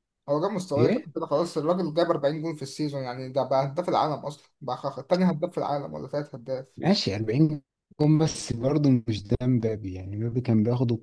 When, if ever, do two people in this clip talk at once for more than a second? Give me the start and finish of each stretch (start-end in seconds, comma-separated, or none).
none